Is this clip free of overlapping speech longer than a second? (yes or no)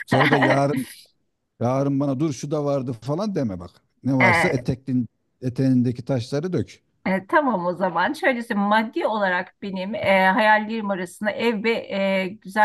yes